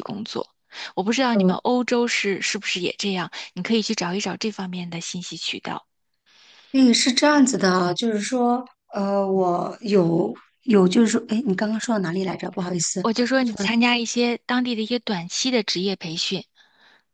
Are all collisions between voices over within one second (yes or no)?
yes